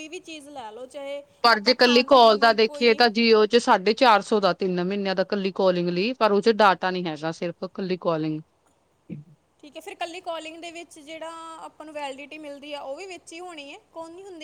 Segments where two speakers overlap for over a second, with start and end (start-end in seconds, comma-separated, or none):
1.4-3.0